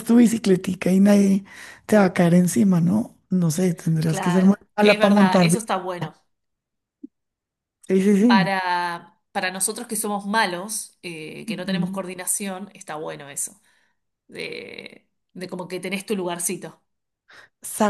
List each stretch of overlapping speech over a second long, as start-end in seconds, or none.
4.0-5.8